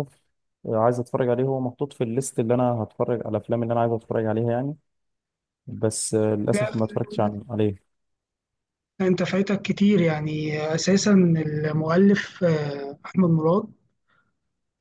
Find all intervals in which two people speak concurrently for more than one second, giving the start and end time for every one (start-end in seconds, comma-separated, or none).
none